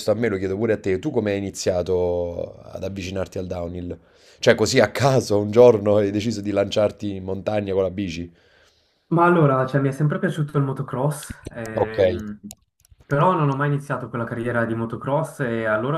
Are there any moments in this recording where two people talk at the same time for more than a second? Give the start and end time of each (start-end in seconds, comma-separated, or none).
none